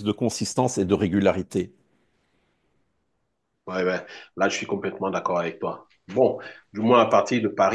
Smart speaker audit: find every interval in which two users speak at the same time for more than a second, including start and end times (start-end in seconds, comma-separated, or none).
none